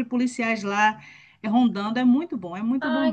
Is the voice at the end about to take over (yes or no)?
yes